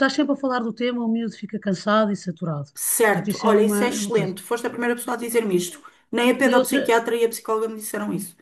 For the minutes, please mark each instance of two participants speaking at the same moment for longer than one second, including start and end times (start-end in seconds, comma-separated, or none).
3.0-4.3